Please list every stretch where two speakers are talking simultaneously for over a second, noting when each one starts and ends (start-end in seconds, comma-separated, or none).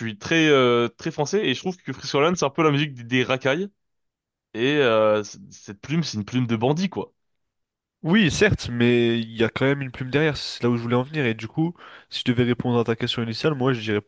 none